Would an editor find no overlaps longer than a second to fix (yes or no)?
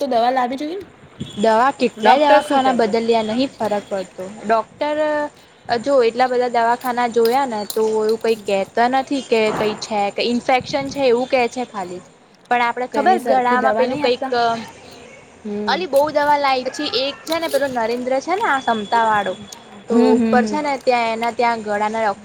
no